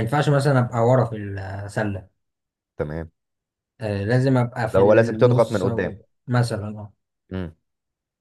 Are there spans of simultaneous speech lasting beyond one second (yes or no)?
yes